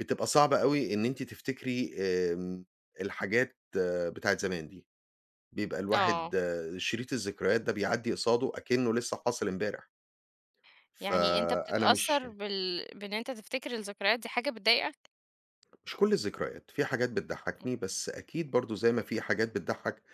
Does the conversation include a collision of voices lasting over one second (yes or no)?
yes